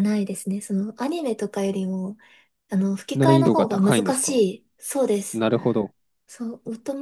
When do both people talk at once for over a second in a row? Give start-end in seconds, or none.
3.1-4.4